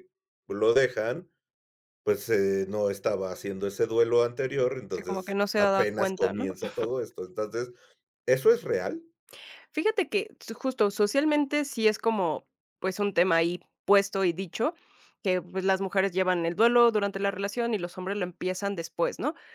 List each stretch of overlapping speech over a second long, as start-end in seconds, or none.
5.0-6.5